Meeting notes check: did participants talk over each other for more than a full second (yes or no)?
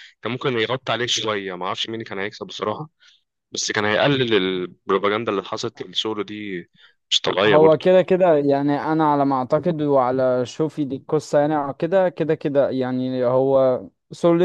no